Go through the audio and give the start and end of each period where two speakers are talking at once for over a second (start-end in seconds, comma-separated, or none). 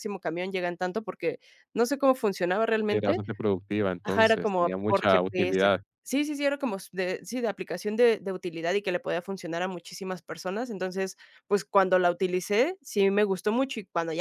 4.0-5.8